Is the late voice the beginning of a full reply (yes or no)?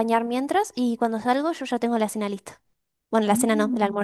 yes